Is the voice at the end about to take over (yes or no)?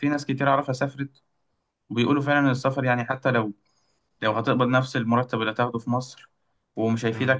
no